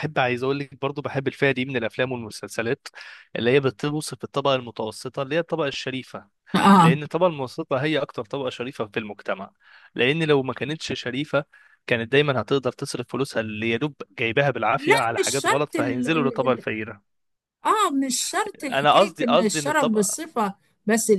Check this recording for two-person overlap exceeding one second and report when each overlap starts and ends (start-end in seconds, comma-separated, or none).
14.8-16.6, 18.7-20.2